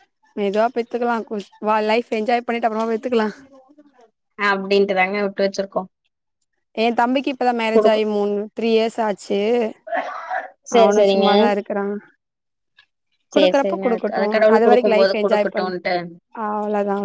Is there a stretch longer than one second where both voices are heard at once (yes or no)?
yes